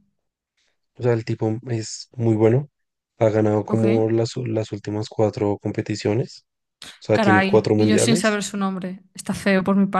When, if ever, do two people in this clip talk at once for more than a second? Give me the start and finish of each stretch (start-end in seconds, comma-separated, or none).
7.1-8.4